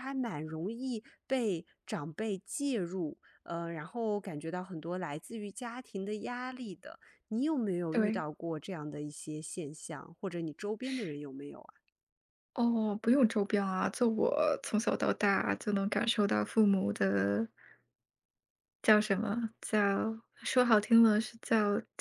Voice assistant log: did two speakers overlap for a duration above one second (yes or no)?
no